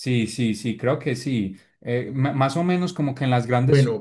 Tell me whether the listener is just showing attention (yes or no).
yes